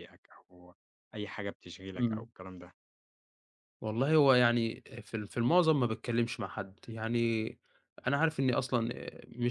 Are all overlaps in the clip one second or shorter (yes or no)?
yes